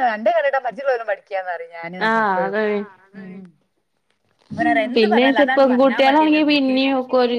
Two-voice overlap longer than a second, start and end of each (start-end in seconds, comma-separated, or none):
5.0-6.7